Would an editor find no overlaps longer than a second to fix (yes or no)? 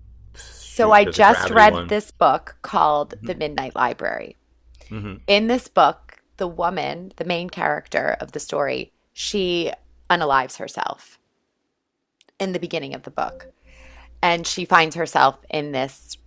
no